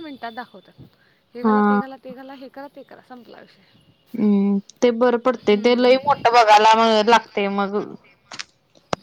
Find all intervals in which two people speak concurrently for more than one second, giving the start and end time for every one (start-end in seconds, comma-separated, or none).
none